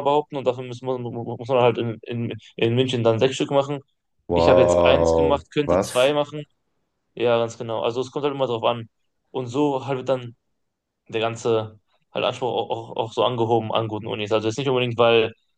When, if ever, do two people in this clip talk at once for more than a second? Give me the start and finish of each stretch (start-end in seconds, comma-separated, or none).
4.3-6.1